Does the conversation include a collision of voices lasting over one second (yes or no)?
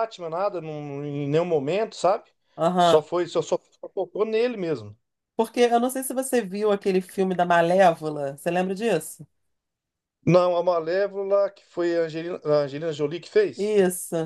no